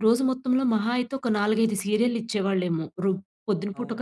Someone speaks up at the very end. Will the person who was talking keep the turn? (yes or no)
no